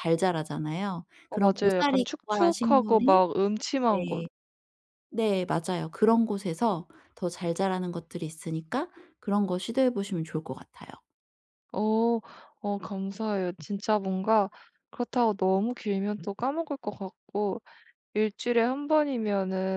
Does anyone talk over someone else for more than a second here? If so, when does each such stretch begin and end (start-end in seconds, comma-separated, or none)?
1.3-3.2